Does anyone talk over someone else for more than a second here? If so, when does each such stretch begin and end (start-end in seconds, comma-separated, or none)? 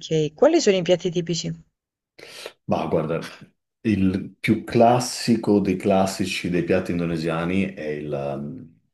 none